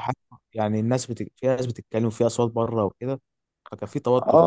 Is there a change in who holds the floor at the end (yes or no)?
yes